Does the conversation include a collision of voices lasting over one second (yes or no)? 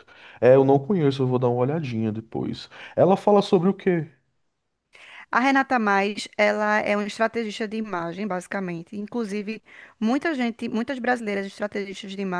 no